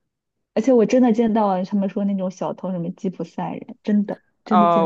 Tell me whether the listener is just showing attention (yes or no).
no